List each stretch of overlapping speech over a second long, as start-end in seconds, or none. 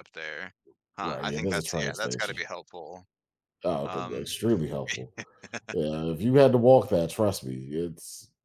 1.0-2.4